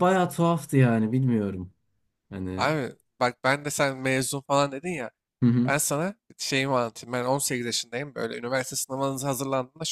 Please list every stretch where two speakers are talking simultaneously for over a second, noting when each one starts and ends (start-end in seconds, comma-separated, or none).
none